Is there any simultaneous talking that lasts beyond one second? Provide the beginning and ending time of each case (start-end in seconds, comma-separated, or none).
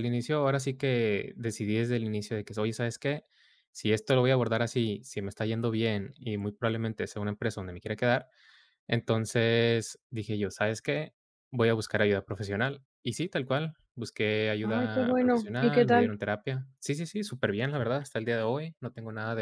14.6-16.1